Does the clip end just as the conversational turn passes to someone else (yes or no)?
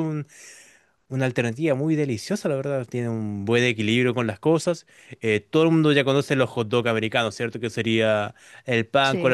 no